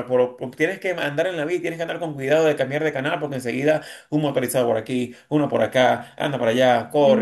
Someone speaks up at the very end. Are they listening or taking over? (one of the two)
taking over